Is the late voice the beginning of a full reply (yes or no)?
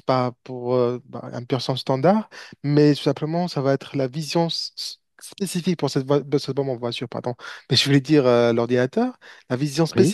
no